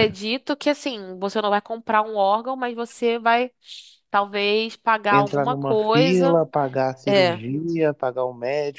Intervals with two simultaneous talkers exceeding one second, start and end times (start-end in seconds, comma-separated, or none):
5.1-6.4